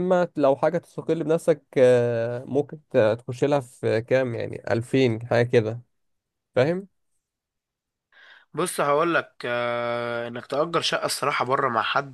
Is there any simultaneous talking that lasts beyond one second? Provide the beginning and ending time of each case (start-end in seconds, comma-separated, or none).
none